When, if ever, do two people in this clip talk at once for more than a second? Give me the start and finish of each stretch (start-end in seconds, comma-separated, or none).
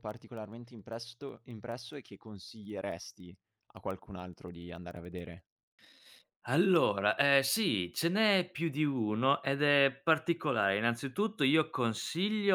none